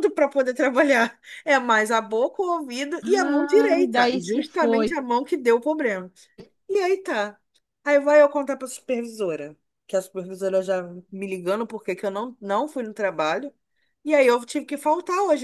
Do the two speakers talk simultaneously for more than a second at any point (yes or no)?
yes